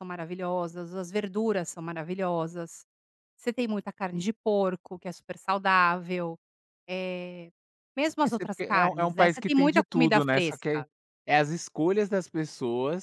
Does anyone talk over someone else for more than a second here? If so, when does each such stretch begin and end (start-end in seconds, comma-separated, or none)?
8.2-10.8